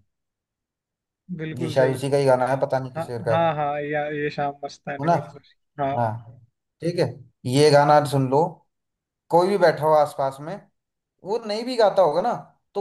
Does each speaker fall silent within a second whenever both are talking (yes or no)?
yes